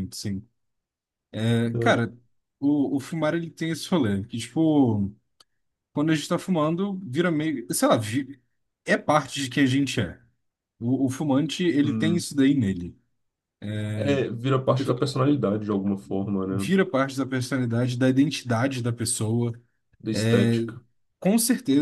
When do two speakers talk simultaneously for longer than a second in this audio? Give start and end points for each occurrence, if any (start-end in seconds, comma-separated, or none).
none